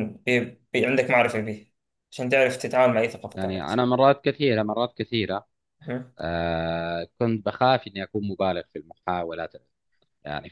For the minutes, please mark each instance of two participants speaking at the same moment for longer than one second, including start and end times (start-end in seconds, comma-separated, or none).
none